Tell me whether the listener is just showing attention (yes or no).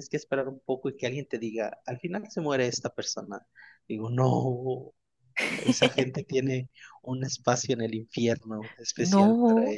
no